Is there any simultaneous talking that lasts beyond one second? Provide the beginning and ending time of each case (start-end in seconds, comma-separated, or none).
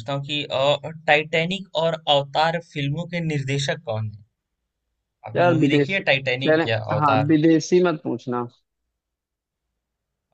5.4-7.3